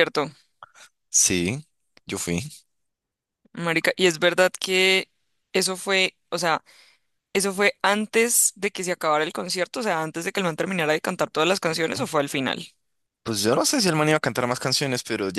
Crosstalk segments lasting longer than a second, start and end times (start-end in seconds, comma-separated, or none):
none